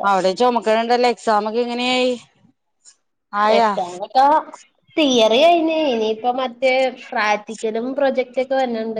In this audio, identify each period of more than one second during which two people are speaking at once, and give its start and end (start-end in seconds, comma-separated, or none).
none